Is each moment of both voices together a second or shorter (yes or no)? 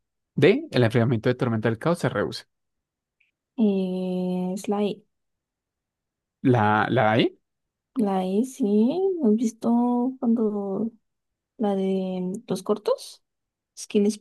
yes